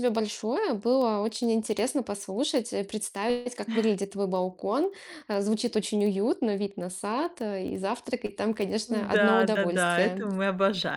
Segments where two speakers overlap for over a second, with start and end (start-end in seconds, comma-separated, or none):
8.9-10.3